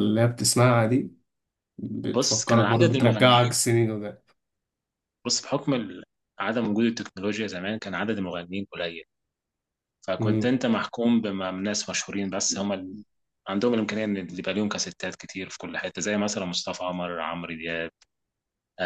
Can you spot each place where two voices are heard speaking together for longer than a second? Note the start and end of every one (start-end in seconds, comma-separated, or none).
2.1-3.6